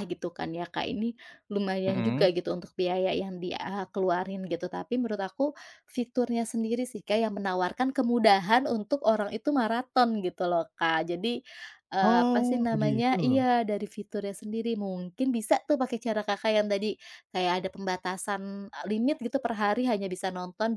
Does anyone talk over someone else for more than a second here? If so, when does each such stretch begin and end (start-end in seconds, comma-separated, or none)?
12.0-13.5